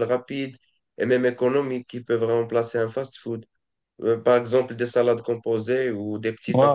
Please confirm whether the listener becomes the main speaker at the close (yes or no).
no